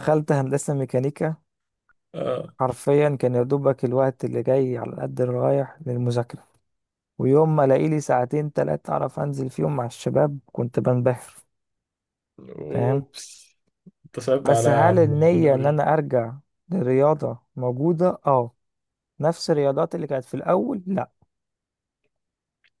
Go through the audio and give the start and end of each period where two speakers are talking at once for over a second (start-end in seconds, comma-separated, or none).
14.4-15.8